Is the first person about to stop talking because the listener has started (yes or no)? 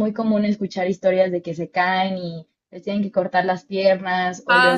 yes